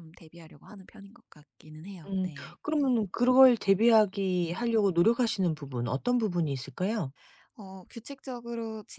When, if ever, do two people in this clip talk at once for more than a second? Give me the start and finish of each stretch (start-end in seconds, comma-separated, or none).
none